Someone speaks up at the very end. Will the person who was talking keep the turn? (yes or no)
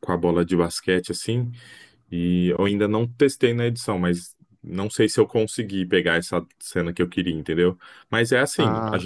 yes